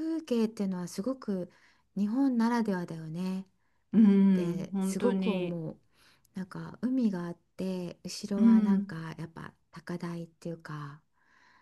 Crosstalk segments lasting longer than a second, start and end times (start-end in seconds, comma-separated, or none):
4.3-5.6